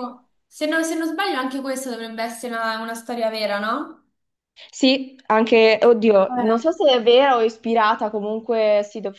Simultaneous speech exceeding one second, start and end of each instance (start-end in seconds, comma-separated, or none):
none